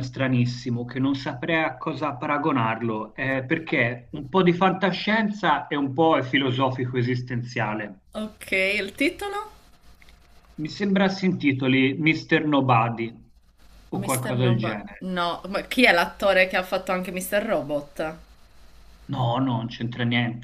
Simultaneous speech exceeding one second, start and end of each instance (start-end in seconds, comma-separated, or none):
13.9-15.1